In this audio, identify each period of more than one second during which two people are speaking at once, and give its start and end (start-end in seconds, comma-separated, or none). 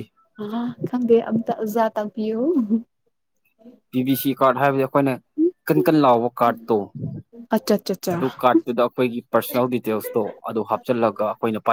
none